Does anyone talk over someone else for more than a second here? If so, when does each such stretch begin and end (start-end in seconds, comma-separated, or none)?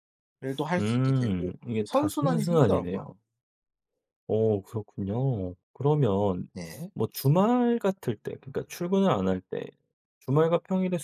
0.8-3.1